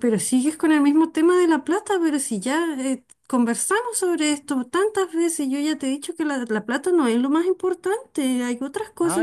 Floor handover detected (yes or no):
yes